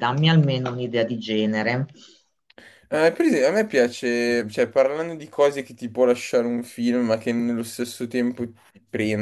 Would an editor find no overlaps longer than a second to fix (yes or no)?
yes